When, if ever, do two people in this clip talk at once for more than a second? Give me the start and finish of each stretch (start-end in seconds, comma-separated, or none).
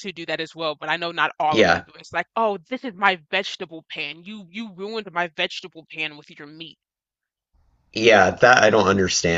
none